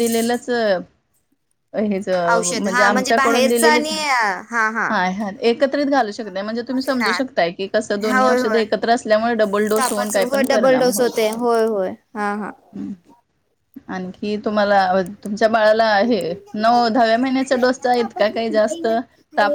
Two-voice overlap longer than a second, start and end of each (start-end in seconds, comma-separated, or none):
2.5-3.9, 9.8-11.4